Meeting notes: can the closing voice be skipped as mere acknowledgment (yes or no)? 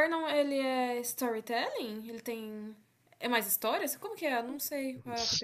no